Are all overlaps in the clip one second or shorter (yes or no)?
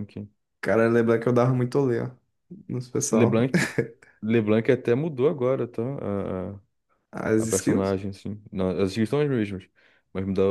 yes